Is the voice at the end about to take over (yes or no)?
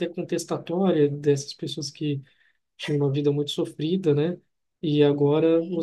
no